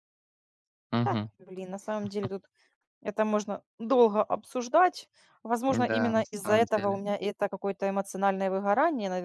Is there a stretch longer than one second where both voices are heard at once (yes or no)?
yes